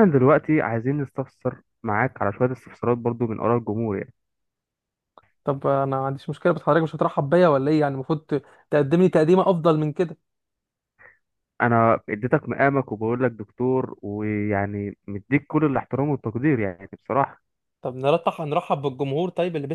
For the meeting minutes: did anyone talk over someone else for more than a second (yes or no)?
no